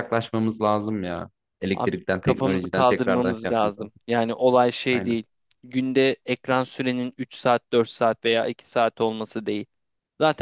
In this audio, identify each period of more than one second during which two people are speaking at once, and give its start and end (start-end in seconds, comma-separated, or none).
1.7-3.9